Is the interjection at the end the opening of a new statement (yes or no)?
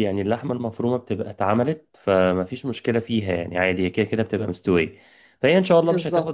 no